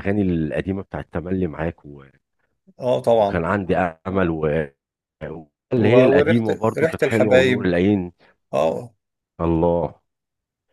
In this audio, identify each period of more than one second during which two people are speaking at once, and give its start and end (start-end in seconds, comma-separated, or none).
5.8-7.7